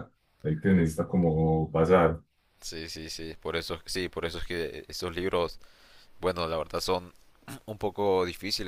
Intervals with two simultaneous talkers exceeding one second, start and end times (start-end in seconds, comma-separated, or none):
none